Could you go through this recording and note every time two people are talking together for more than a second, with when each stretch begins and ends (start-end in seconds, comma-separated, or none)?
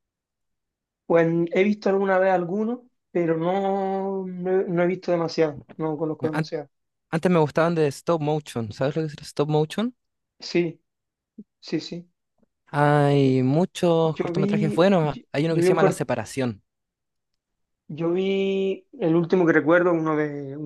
14.0-16.1